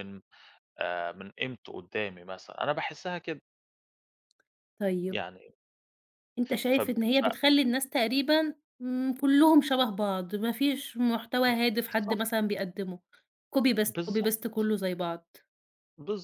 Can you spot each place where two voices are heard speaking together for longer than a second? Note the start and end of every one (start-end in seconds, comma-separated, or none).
none